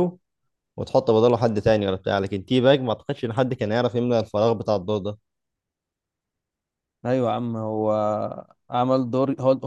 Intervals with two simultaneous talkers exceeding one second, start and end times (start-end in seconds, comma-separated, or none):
none